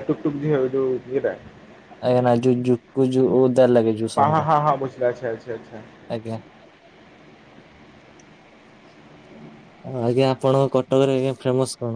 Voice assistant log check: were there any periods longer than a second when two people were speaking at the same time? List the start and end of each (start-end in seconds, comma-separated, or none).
none